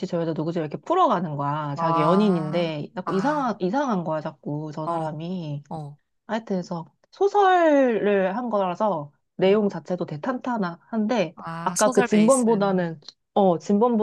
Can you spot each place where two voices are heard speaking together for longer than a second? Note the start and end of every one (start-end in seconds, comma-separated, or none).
1.7-3.4, 11.4-13.0